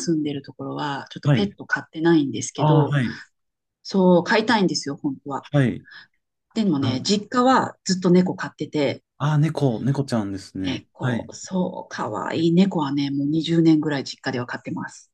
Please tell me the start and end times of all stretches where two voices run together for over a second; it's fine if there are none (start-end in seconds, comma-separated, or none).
none